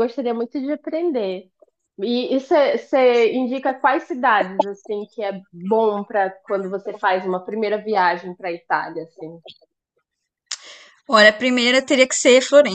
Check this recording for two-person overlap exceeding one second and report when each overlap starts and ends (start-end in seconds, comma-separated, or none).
none